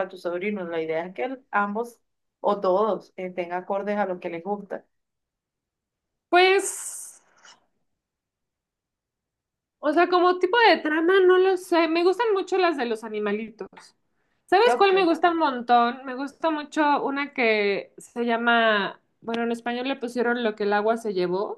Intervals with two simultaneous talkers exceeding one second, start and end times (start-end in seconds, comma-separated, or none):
none